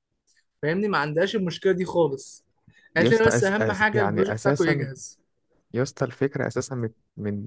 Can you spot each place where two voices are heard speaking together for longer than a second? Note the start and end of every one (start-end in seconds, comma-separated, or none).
3.0-4.9